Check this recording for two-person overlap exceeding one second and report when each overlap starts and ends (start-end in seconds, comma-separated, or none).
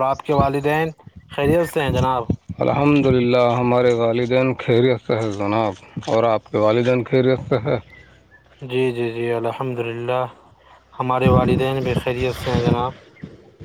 none